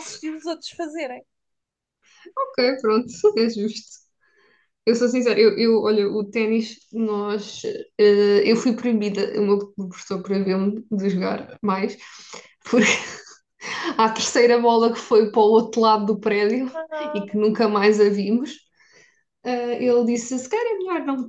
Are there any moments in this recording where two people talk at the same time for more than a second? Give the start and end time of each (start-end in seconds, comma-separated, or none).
none